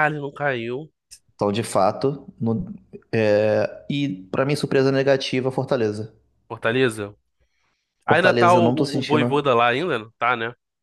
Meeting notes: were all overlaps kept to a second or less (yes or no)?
no